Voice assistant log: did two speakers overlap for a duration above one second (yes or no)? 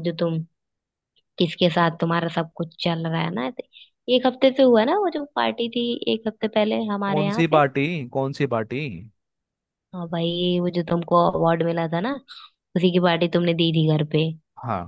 no